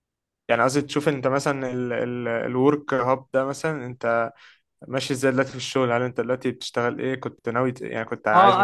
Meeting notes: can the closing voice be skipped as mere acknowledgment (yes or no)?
no